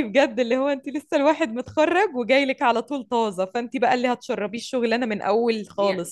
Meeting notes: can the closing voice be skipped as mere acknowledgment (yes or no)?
no